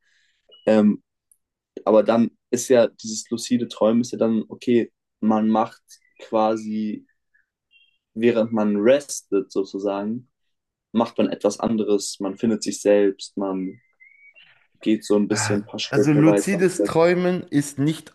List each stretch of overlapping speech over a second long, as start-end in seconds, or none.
15.3-16.9